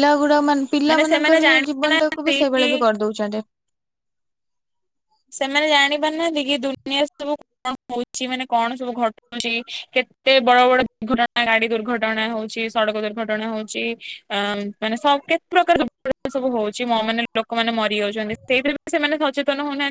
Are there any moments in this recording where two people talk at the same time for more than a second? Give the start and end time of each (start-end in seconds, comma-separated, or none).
1.1-2.7